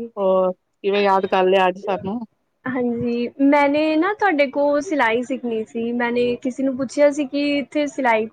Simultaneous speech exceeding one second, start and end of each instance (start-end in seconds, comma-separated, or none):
none